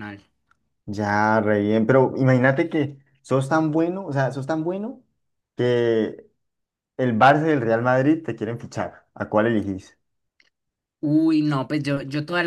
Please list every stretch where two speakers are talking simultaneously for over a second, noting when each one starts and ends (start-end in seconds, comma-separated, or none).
none